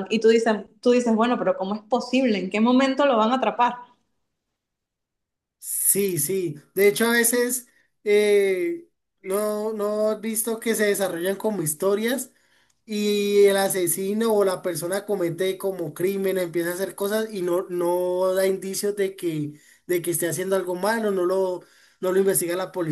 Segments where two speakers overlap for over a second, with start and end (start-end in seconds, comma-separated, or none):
none